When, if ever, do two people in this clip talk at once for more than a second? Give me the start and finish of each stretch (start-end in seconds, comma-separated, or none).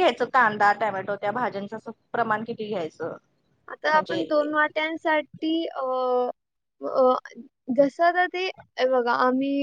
none